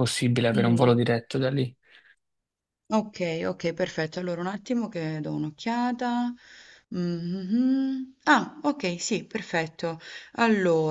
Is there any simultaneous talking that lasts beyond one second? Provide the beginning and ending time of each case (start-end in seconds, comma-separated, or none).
none